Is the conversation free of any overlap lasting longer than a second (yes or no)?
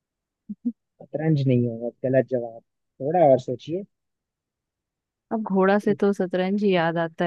yes